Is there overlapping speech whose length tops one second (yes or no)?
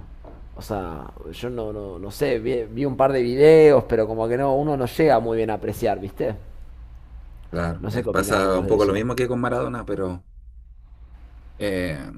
yes